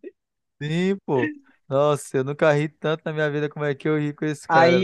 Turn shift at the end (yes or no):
yes